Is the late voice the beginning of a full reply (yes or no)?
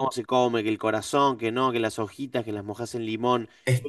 no